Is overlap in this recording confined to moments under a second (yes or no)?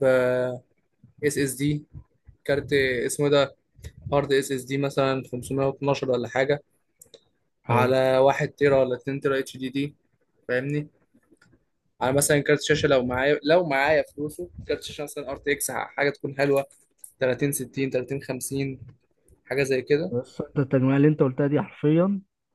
yes